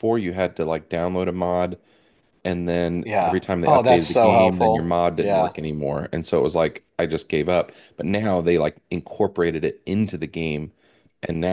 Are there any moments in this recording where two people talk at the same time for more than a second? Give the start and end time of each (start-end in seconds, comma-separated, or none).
3.0-5.5